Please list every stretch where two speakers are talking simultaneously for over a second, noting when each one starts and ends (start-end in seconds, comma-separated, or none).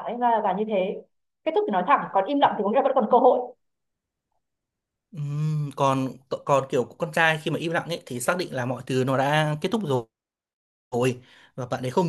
none